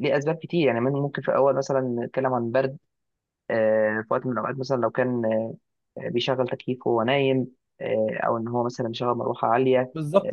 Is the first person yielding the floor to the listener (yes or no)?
yes